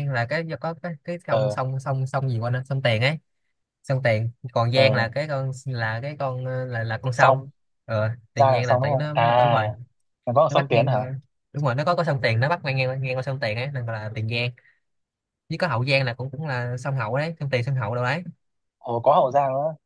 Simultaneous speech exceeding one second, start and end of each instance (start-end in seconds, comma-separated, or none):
8.3-9.7